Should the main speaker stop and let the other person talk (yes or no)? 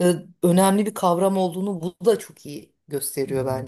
yes